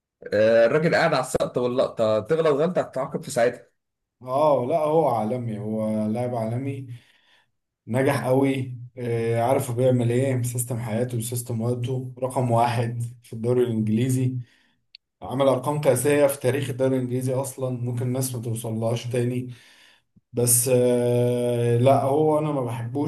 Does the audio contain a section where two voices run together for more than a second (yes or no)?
no